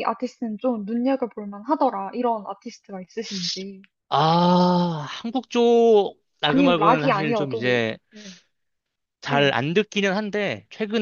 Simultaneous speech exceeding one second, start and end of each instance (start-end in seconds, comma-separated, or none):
6.5-8.0